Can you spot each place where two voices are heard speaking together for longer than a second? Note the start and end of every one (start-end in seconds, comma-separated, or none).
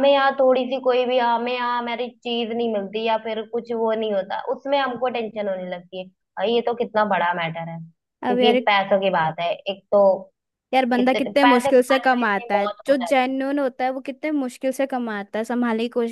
11.0-13.3